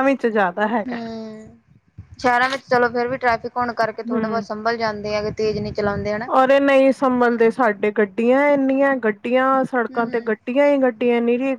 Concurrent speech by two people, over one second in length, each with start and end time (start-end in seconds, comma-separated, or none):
none